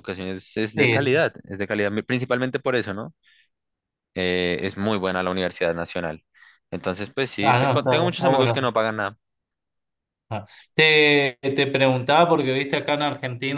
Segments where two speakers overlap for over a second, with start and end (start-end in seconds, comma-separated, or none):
7.4-8.7